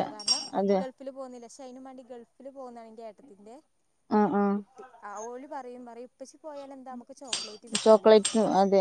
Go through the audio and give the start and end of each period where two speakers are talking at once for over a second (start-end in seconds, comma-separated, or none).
none